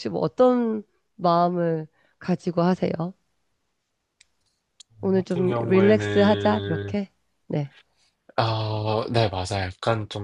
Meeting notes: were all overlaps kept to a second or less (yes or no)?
no